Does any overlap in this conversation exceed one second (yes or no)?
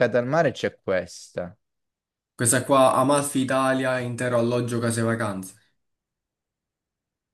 no